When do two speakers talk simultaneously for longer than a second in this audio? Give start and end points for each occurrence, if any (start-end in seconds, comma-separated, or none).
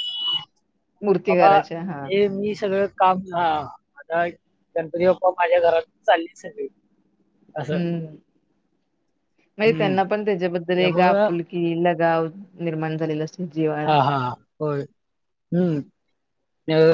none